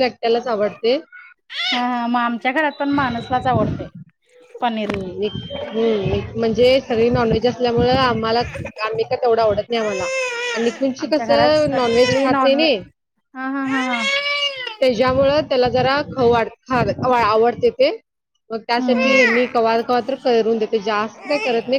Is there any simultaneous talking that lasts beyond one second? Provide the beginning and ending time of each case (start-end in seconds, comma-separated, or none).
11.0-12.7